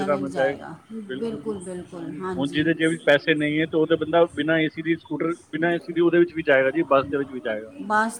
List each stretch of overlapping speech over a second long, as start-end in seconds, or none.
2.4-3.8